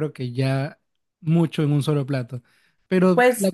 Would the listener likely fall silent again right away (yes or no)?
yes